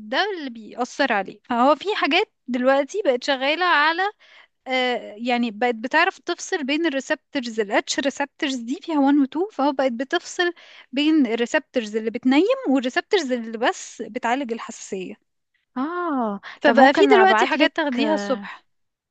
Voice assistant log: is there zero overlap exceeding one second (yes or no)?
no